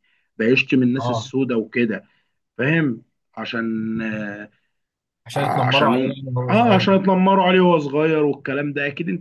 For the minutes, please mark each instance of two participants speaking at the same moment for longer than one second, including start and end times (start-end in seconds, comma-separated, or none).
5.3-6.9